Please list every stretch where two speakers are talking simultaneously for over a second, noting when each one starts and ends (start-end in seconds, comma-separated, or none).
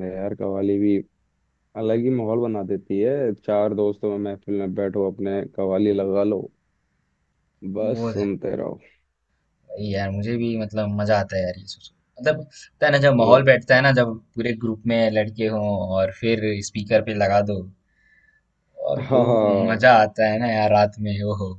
none